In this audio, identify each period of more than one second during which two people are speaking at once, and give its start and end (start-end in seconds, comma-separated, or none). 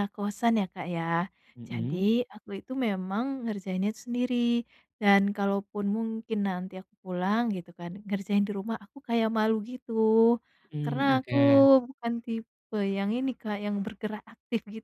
none